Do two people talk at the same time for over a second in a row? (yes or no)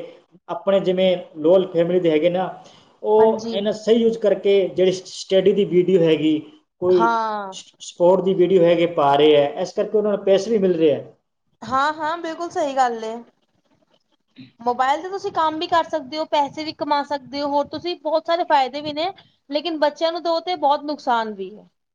no